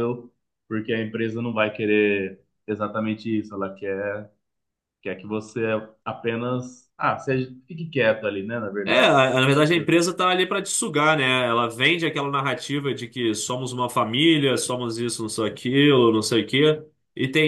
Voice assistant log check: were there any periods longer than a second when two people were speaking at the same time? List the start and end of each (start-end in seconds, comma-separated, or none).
none